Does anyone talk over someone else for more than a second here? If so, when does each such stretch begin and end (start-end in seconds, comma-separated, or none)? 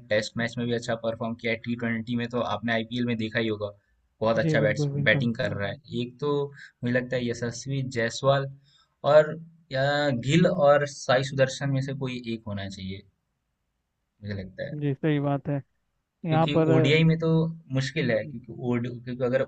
4.4-5.8